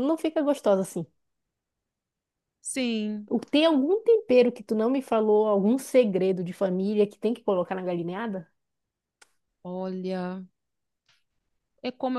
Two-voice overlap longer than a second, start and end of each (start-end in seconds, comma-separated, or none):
none